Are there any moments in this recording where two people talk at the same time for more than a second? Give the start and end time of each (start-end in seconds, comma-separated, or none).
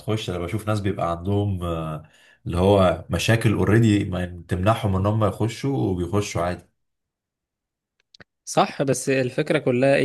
none